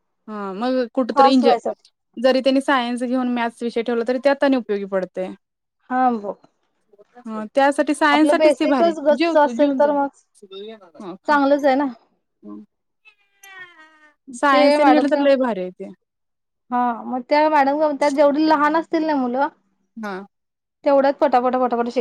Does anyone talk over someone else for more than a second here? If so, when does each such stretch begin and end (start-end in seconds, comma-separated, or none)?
8.2-9.9